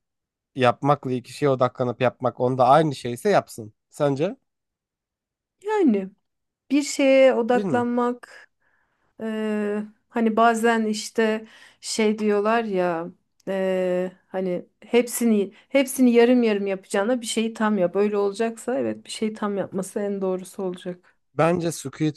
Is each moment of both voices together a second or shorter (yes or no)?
yes